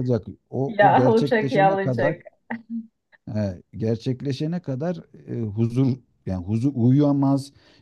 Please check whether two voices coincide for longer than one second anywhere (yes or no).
yes